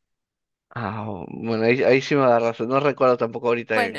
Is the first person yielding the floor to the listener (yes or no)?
yes